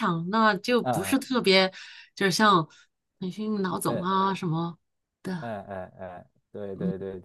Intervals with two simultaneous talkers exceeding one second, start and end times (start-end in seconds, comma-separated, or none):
none